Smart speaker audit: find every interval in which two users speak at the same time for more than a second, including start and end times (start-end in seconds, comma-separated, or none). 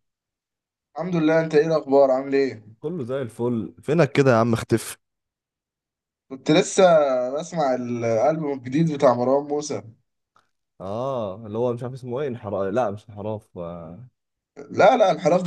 none